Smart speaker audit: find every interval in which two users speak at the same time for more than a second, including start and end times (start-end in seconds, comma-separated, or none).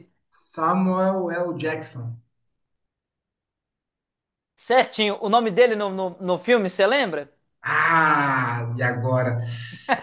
none